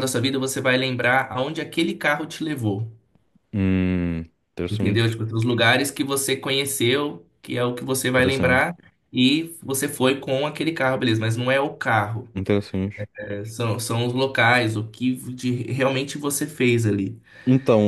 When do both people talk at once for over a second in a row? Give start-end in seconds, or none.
none